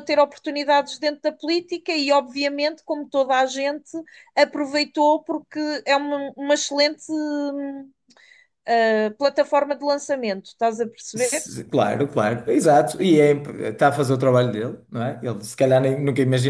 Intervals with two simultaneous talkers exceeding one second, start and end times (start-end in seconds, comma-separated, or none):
none